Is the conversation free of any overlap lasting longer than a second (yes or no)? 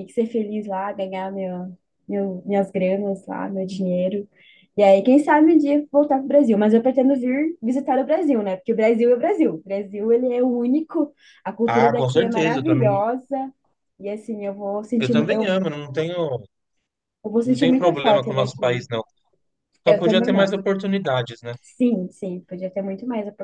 no